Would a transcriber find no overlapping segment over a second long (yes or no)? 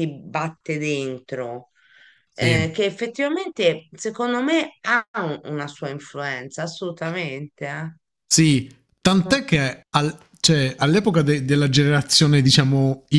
yes